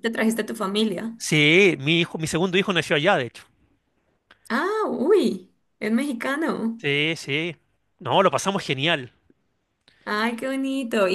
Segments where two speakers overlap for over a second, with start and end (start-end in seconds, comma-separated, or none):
none